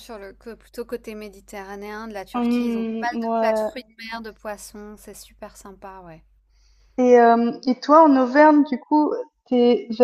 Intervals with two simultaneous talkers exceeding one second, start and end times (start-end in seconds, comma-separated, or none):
2.3-3.7